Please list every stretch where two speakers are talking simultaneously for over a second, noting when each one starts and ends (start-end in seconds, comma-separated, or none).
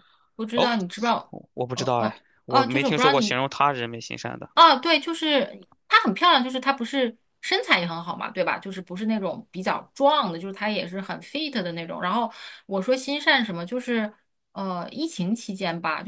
1.7-3.4